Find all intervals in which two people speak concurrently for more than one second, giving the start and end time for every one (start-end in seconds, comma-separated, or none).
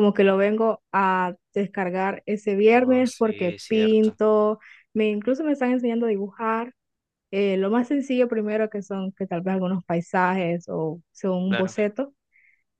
2.7-4.2